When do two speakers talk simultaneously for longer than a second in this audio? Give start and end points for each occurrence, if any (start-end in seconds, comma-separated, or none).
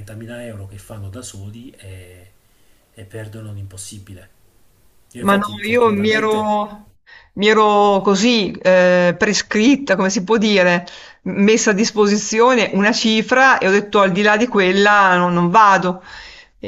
5.2-6.6